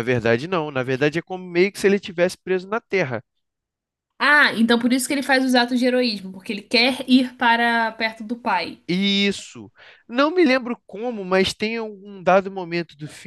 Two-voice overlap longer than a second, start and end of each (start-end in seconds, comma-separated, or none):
none